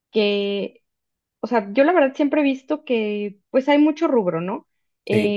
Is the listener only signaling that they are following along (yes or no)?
yes